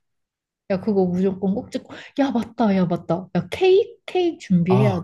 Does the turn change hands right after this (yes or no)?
yes